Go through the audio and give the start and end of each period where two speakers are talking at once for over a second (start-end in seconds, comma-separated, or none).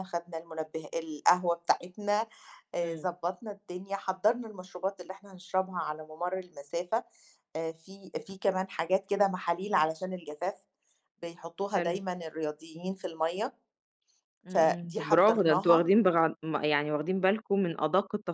14.5-15.9